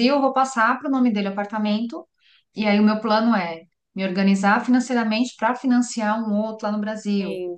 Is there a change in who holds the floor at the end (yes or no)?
no